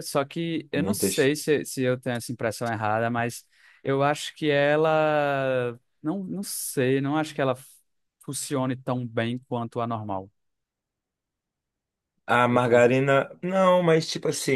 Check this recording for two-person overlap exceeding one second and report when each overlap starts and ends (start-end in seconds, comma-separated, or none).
none